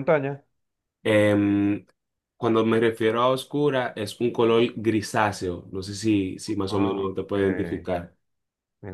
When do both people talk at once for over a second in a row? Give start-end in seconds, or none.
6.7-7.9